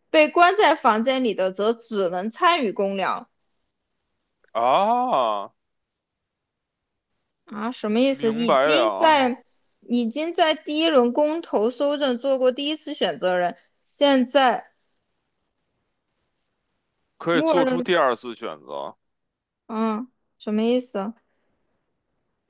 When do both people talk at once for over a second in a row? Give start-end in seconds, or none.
8.1-9.4